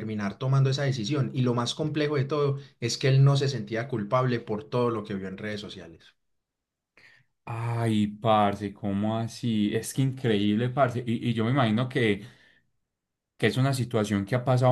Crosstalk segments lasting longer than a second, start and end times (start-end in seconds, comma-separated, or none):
none